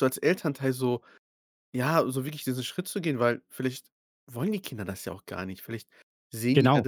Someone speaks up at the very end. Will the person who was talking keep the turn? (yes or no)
yes